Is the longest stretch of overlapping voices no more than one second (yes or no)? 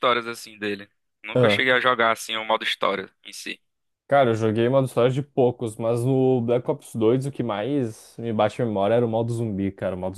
yes